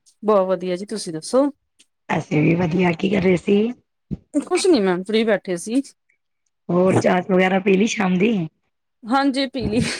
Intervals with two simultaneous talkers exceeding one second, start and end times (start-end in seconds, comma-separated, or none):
none